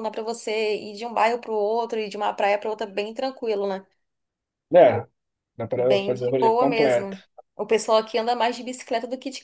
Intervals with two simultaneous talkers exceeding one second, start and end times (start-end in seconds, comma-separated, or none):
5.8-7.2